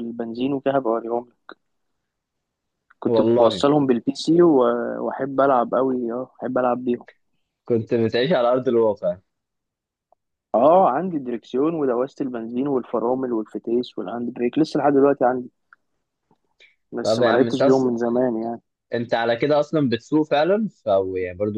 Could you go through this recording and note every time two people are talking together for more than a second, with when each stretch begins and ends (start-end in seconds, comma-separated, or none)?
none